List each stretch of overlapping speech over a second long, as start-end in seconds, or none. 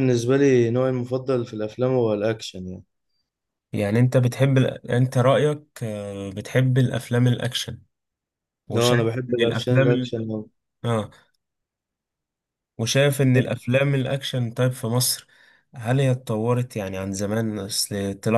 8.8-10.3